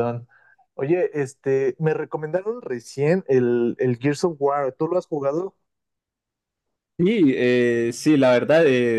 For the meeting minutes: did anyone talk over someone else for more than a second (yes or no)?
no